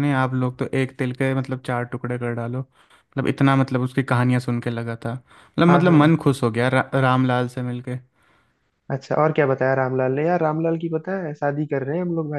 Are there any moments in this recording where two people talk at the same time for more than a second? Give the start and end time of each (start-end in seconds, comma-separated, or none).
none